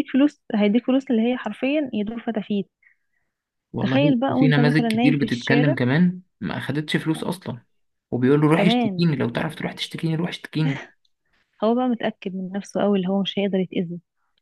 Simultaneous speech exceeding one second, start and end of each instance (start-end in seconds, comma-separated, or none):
3.8-5.8